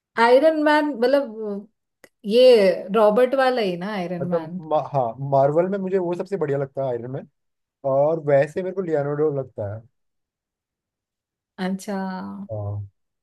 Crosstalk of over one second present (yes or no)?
no